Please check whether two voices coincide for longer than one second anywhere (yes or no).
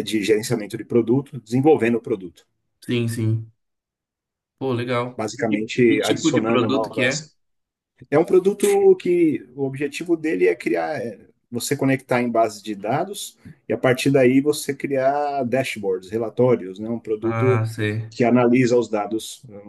yes